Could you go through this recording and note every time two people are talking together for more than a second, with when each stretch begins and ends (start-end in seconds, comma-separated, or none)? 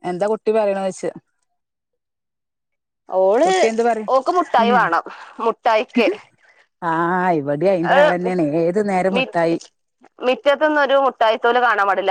none